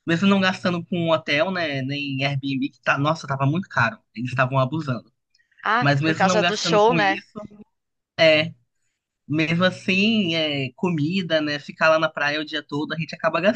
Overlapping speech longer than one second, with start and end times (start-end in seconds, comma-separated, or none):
5.8-7.2